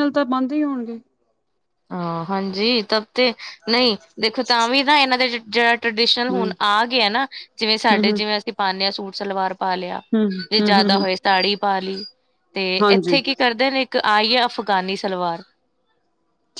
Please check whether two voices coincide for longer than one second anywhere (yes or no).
no